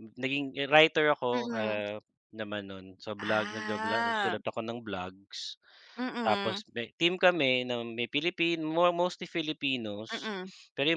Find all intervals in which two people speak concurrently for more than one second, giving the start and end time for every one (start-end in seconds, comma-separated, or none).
3.2-4.4